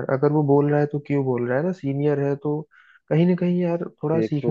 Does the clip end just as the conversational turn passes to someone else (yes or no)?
yes